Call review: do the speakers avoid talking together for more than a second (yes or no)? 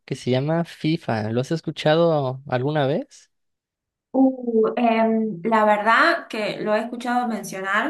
yes